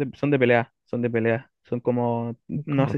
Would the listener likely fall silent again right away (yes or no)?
yes